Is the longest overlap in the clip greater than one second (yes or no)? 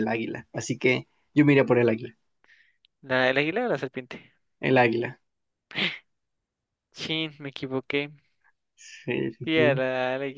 no